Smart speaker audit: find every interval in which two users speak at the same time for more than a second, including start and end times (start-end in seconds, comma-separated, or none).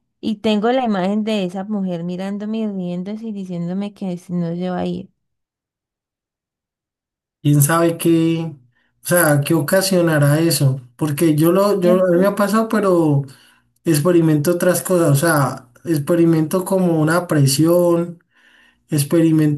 none